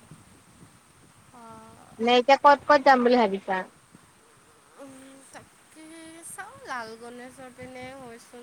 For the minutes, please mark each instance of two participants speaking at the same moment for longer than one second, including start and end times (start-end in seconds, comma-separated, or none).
none